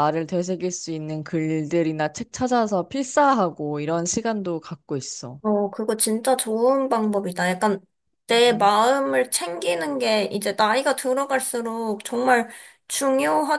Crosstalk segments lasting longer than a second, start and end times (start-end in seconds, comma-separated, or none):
none